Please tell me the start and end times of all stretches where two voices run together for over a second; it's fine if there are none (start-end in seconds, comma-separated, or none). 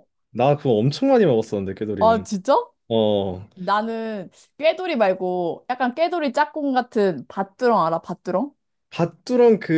none